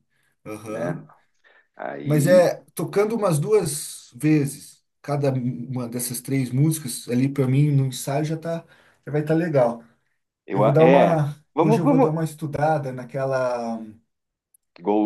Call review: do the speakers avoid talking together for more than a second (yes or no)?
no